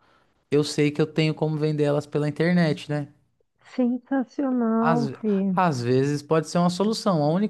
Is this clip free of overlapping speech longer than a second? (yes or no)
yes